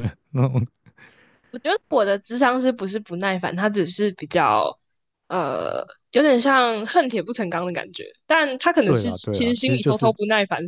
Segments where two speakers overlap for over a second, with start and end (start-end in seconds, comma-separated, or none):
8.8-10.1